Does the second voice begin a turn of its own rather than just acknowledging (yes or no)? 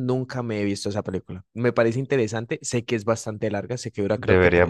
yes